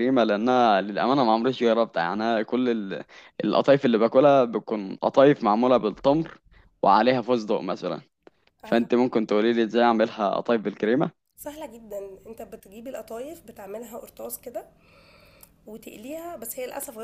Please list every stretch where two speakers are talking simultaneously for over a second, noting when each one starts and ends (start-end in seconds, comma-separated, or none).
none